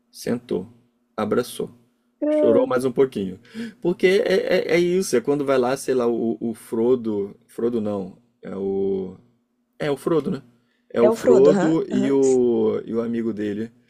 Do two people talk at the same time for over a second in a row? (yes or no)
yes